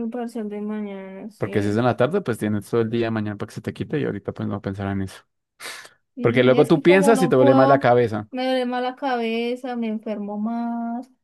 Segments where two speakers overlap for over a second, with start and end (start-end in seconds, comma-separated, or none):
6.2-7.9